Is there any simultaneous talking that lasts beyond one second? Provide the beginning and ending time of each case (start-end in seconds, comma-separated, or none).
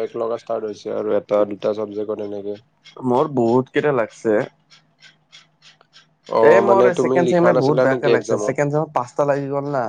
6.5-8.5